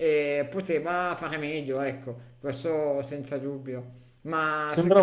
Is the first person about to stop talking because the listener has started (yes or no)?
no